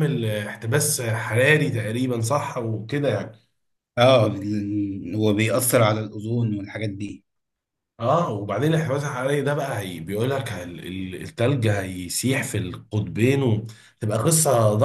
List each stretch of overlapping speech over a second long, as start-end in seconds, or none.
none